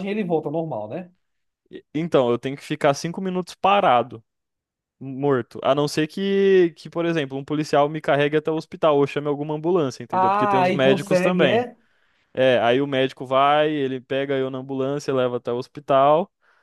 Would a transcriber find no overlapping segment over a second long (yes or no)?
no